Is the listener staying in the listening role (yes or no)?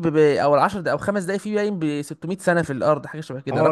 no